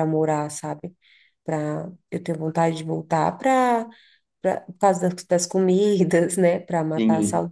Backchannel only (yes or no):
yes